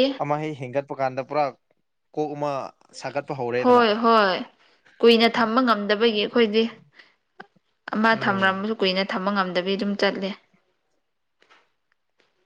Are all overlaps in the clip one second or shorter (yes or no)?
yes